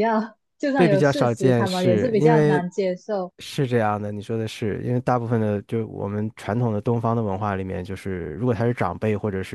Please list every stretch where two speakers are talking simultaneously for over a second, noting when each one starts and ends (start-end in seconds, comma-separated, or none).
0.8-2.6